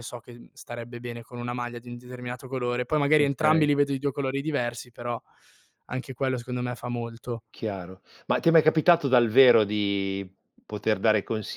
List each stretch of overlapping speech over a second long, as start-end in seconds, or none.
none